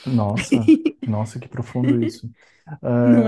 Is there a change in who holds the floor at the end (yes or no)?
no